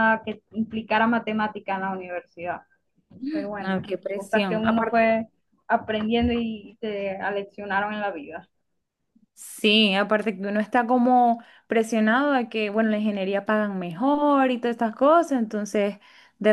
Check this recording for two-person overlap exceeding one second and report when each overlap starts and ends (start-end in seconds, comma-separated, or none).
3.6-5.2